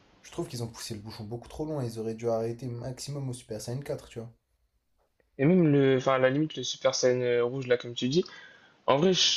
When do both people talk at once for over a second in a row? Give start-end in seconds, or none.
none